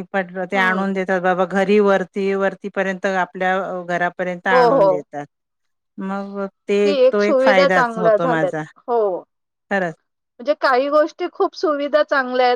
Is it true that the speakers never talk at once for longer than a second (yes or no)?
no